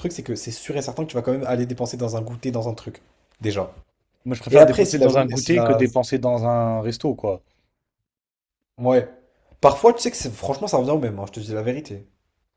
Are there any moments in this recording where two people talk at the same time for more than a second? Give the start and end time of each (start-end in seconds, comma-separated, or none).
4.5-5.8